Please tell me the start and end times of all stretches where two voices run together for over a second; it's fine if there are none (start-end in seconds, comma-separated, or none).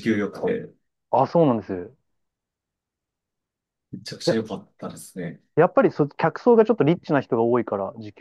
none